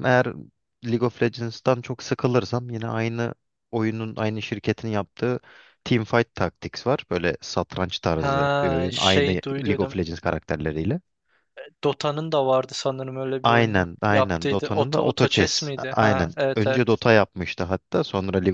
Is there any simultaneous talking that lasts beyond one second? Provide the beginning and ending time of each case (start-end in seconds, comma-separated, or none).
8.2-10.0, 13.4-16.9